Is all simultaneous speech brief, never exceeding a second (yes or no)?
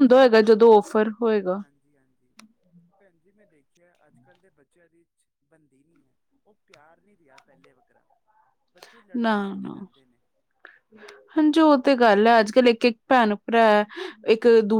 yes